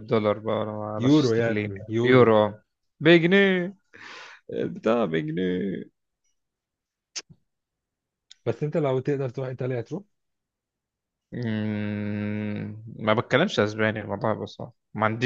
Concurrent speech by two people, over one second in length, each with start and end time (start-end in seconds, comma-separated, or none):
1.0-2.4